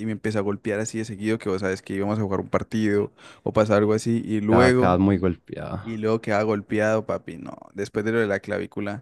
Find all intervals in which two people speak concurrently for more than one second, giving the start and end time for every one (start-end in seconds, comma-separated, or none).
none